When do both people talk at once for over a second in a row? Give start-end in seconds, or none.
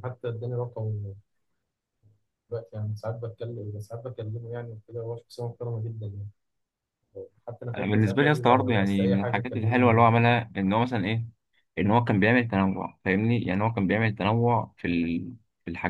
7.8-10.0